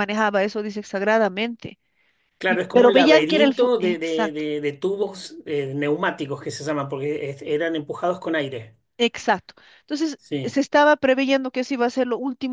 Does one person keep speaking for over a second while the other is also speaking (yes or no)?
yes